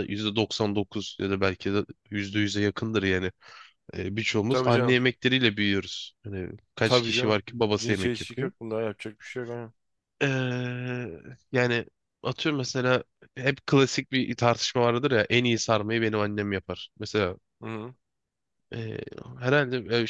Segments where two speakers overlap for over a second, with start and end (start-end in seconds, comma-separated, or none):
6.8-8.5